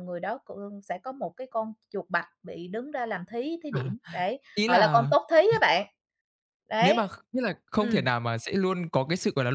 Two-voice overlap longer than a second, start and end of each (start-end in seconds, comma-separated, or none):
none